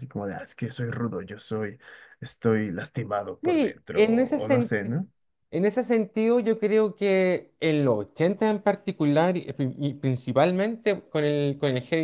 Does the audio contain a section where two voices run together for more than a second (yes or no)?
yes